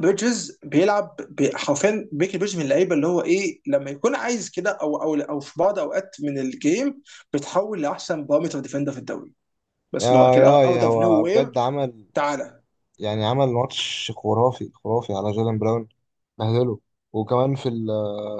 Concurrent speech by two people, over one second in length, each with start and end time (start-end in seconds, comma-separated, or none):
10.0-11.6